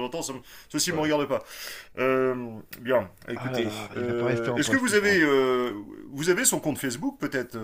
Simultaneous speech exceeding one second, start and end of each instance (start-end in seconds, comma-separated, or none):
3.4-5.2